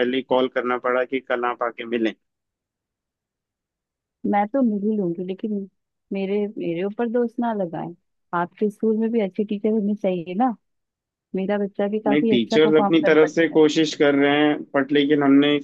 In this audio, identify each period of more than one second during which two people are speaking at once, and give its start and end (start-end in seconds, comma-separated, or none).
12.1-13.6